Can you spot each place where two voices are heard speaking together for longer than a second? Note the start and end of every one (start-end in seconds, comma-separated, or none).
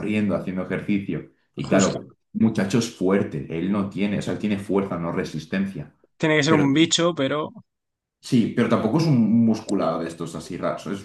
none